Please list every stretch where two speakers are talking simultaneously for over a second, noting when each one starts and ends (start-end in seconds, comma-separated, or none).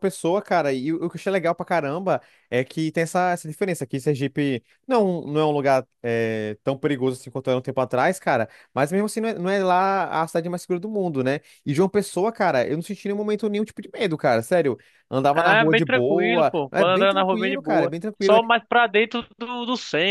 15.3-18.4